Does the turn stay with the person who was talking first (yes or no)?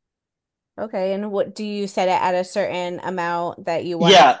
no